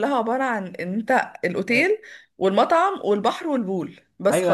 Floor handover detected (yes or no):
yes